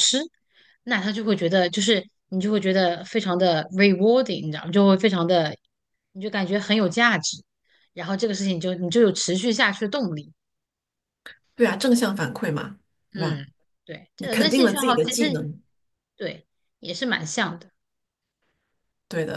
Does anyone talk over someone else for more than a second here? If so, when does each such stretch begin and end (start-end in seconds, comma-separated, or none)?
14.2-15.5